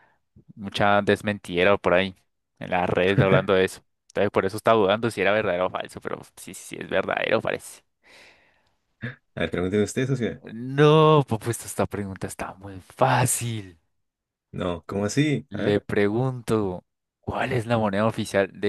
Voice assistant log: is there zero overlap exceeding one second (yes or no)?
yes